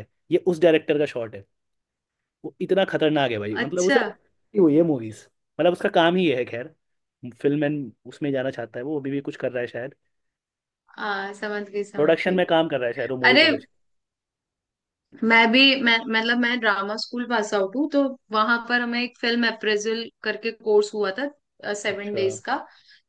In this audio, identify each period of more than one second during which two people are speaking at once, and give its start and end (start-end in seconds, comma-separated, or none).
none